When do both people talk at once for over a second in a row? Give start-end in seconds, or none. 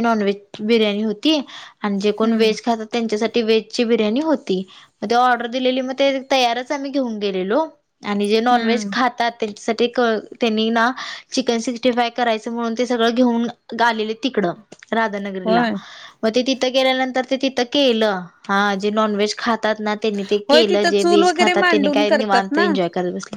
20.5-22.6